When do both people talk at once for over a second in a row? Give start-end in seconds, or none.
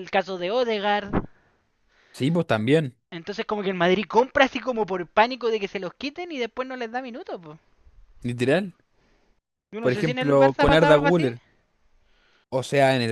9.8-11.3